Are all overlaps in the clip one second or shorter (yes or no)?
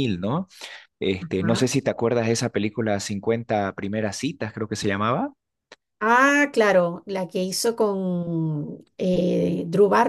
yes